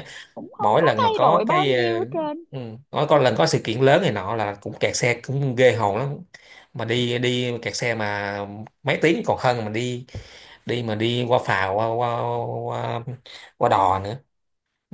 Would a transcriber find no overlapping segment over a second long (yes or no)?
no